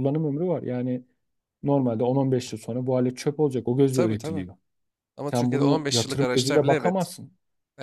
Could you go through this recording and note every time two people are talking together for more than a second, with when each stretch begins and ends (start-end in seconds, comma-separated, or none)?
5.3-7.1